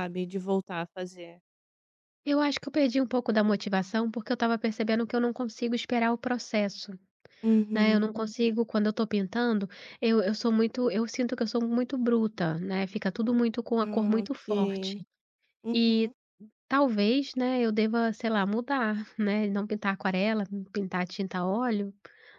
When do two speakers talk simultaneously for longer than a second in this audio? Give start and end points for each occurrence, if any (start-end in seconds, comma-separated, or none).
13.8-15.0